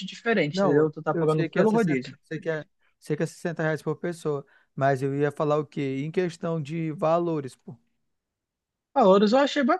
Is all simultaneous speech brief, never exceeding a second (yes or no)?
no